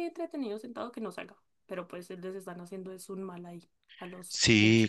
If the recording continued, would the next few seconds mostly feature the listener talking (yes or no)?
yes